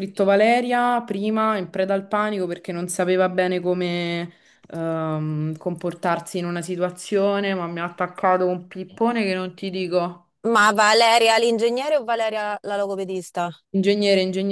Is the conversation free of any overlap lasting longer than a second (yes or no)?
yes